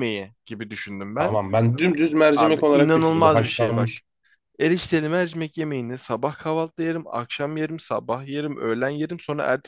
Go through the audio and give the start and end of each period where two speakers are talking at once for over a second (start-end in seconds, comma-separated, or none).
2.4-3.9